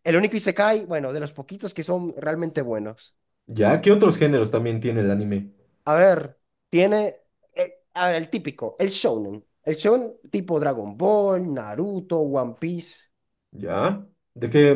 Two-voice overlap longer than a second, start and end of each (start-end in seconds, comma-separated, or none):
none